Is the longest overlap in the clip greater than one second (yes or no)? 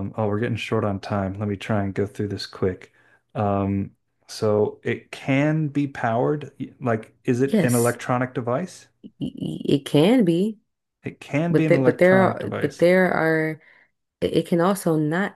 yes